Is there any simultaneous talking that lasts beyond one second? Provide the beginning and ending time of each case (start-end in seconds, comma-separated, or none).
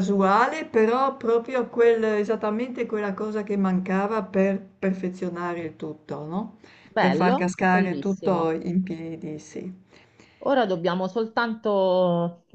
7.0-8.5